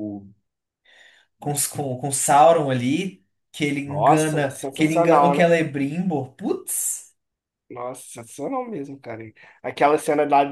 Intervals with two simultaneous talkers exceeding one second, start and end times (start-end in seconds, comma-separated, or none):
3.9-5.5